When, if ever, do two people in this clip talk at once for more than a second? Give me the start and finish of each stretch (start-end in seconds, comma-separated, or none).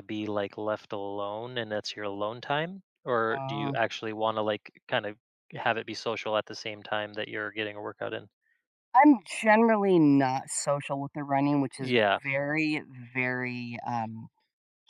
none